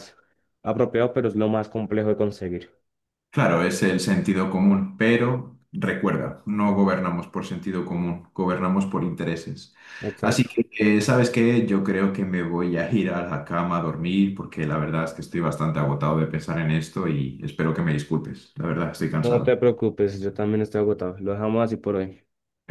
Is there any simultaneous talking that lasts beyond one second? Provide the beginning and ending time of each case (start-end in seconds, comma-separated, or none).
none